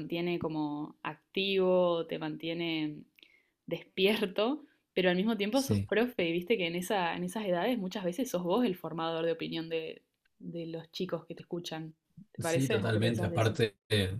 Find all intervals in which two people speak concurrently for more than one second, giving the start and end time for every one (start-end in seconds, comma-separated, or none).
12.4-13.6